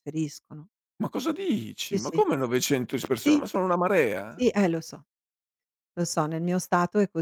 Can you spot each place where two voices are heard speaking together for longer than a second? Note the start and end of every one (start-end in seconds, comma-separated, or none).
none